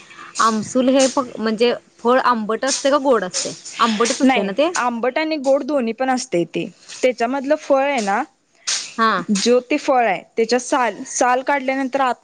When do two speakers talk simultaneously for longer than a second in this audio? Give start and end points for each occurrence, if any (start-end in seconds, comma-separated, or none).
none